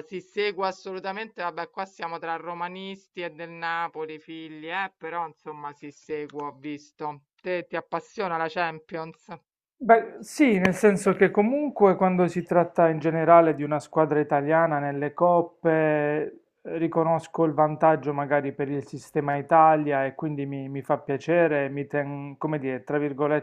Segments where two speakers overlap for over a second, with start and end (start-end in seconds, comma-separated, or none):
none